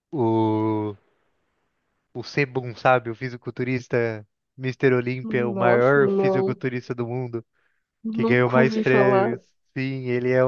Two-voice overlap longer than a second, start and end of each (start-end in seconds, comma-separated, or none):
5.2-6.6, 8.1-9.4